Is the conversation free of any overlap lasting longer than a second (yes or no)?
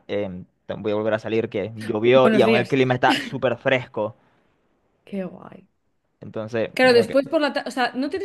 yes